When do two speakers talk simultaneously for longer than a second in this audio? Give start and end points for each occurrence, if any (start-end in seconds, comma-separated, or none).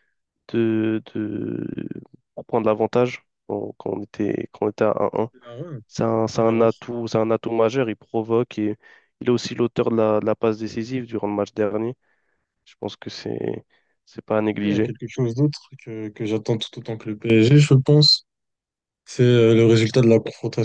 none